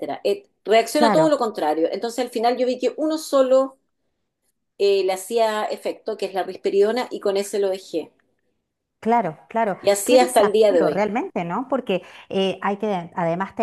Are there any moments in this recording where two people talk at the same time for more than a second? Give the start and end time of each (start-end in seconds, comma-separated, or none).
9.8-11.1